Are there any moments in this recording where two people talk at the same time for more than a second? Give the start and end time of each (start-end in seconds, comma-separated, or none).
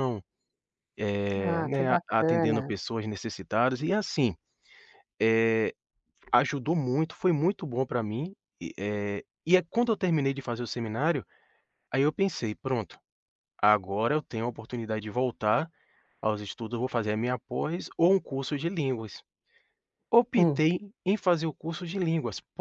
1.4-2.7